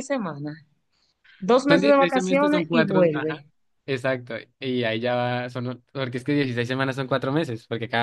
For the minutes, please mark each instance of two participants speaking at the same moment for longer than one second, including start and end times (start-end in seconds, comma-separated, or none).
1.7-3.5